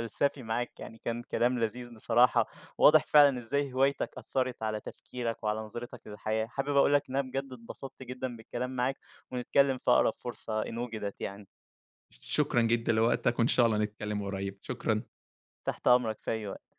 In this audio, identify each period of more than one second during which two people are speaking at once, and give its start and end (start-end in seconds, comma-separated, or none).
none